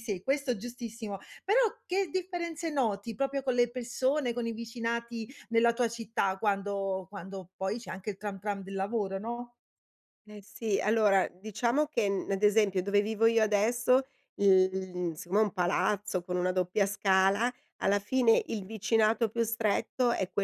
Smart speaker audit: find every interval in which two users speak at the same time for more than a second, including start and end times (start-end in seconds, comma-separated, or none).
none